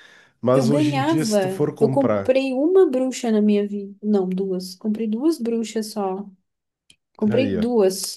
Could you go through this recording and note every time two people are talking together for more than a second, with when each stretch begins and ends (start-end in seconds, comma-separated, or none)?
0.5-2.4